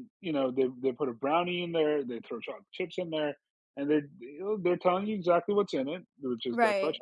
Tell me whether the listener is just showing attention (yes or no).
yes